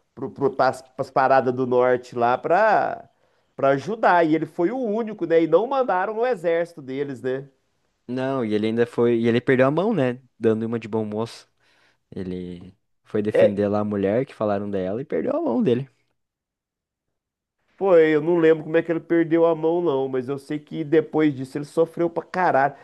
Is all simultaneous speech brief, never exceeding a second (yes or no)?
yes